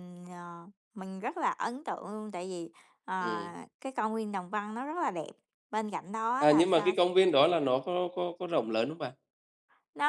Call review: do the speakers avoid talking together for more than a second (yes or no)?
yes